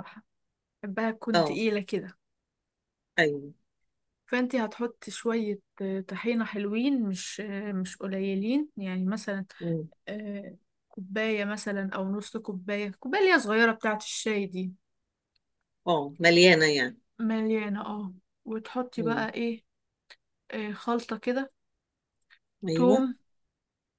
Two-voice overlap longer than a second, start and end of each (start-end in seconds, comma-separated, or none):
none